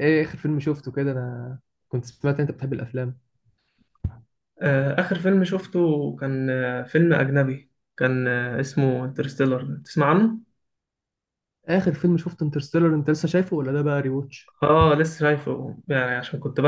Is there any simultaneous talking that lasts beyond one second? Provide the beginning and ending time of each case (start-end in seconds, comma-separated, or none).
none